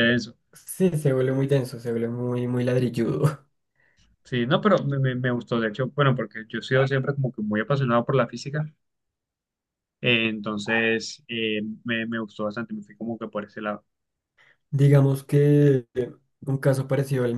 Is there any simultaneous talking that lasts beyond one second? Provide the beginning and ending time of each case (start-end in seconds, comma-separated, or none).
none